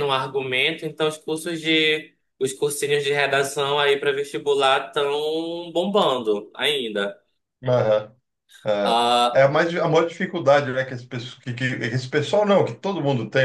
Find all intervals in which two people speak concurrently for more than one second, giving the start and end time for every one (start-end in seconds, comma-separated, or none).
none